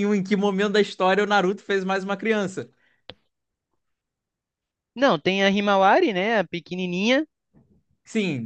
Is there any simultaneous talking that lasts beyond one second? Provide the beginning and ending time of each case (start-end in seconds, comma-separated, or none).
none